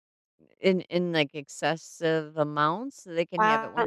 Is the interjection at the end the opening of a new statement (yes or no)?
yes